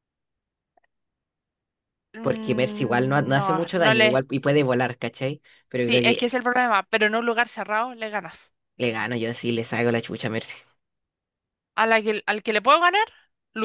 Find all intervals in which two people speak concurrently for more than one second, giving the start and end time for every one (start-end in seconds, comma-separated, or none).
2.2-4.2